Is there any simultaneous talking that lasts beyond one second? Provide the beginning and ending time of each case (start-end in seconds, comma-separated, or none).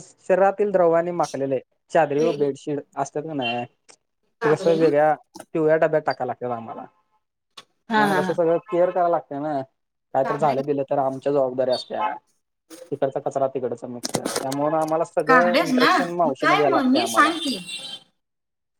15.3-17.3